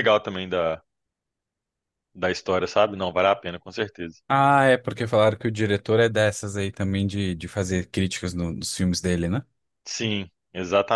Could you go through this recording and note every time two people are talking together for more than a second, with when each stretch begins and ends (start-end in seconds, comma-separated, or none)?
none